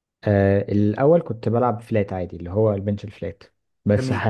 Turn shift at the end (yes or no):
no